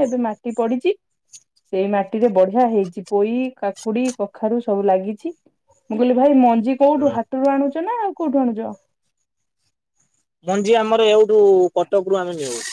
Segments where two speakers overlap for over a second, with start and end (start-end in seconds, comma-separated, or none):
none